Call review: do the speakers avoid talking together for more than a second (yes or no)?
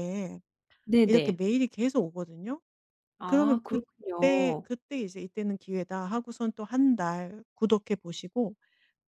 no